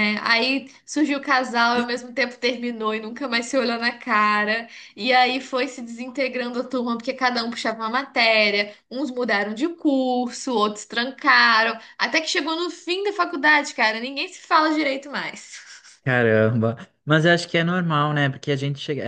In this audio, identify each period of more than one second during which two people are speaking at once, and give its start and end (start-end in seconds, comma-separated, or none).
none